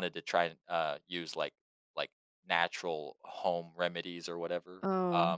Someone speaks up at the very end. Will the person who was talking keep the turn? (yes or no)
yes